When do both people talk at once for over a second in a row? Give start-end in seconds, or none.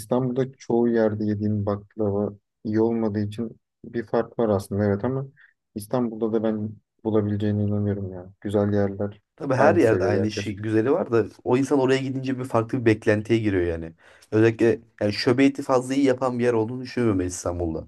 9.3-10.7